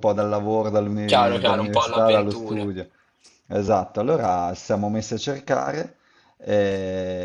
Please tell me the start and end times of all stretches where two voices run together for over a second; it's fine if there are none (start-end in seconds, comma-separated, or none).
1.1-2.7